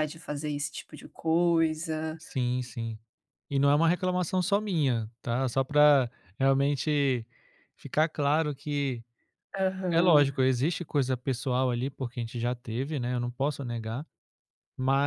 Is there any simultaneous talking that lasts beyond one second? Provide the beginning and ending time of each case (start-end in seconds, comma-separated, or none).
none